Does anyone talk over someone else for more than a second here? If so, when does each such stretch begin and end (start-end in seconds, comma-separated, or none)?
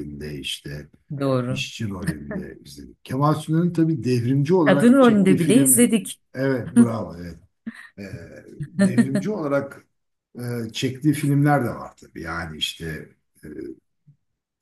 4.6-5.8